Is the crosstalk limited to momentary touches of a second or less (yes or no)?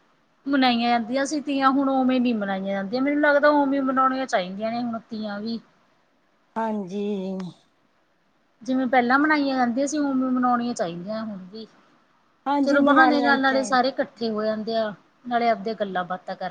no